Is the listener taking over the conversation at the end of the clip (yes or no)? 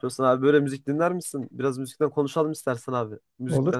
yes